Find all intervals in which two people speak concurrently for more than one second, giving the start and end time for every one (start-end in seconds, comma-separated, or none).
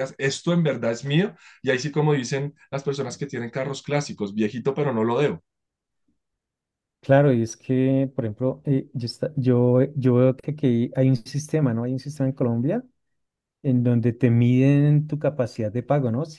none